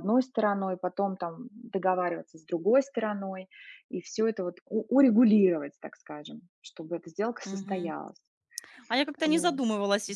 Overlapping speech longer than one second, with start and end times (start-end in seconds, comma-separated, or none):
none